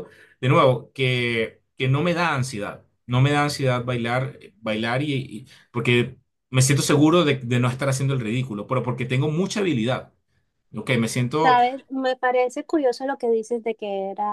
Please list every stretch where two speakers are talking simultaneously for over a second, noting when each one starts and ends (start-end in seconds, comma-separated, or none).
none